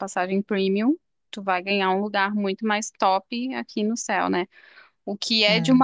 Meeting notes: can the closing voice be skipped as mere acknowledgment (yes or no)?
yes